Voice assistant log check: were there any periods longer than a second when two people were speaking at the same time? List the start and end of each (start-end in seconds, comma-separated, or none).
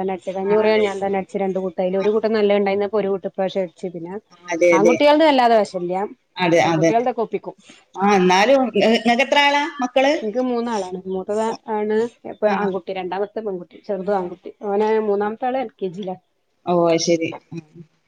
none